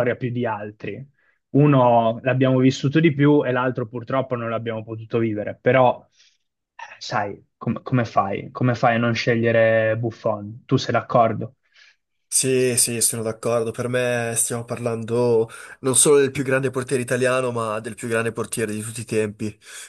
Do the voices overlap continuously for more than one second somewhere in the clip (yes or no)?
no